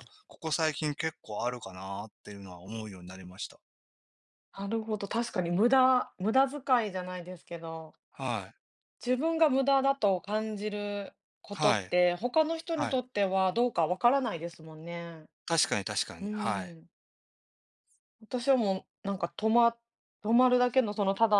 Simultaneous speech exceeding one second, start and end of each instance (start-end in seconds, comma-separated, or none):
none